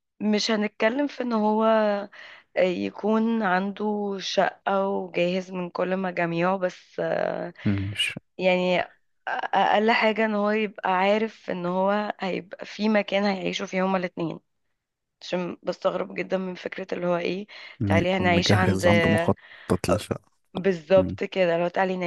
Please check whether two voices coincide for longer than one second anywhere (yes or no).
yes